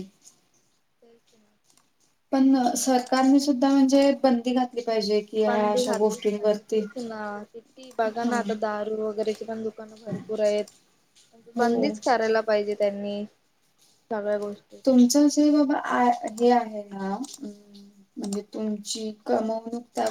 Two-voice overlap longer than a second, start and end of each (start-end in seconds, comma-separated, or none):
5.5-6.8